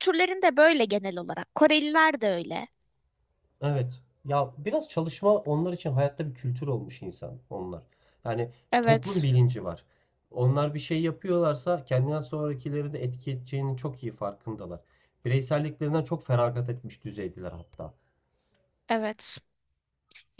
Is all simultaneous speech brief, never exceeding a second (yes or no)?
yes